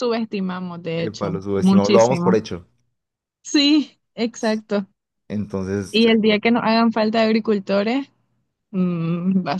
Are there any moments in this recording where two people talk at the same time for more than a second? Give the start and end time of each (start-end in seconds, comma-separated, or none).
1.0-2.3